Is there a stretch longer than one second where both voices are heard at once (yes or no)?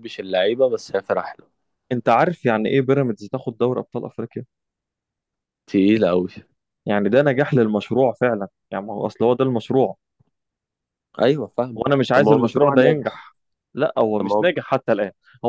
yes